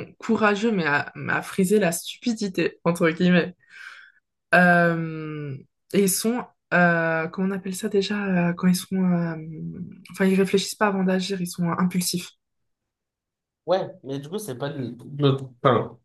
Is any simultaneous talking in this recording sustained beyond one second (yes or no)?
no